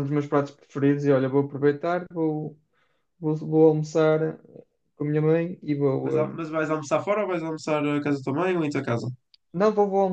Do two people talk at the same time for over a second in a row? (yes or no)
no